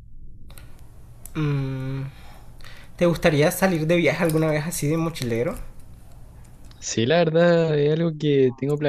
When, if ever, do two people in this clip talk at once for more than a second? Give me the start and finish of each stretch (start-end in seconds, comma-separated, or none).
none